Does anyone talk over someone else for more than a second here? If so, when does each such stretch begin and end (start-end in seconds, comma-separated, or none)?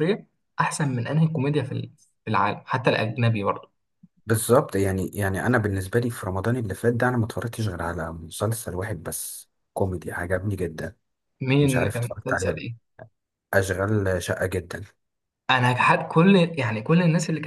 11.6-12.8